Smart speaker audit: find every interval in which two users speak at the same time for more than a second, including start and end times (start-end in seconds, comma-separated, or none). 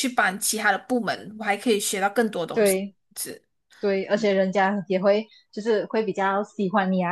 none